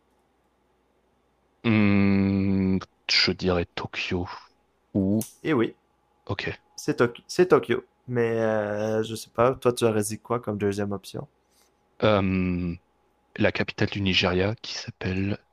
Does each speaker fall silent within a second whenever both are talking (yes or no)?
yes